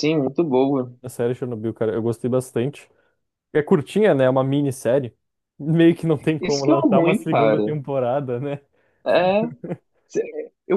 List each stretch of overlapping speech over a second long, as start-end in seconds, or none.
6.4-7.6